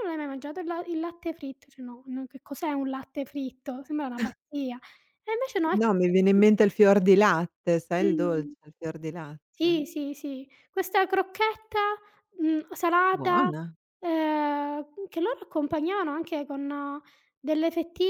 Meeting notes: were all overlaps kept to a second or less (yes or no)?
yes